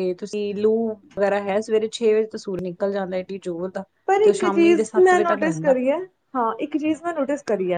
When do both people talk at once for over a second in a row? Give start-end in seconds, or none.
4.2-5.7